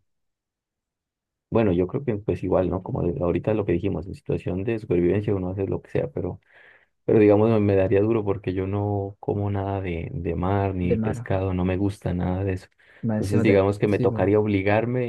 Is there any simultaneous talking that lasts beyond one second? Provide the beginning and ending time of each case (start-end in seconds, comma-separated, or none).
13.1-14.3